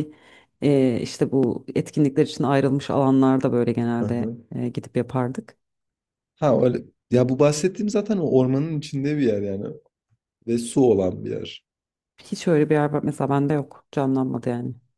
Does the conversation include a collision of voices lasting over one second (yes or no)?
no